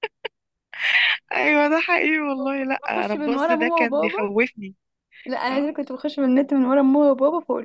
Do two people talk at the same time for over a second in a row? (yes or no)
yes